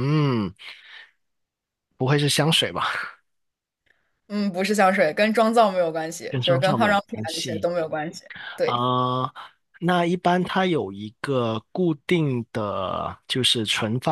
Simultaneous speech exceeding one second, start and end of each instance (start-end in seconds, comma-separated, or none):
6.3-7.7